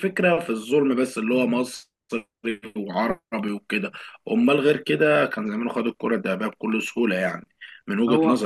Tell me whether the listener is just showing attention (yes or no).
yes